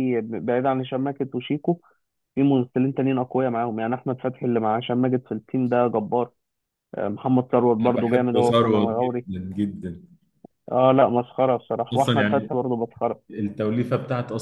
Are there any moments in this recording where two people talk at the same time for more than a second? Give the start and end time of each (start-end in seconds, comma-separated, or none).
7.8-9.3